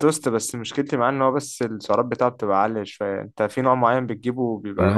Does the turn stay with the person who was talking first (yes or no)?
no